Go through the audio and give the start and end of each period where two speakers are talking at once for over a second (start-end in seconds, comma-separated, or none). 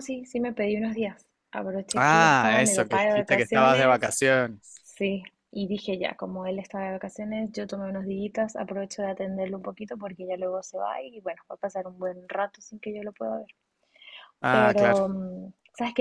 1.9-4.1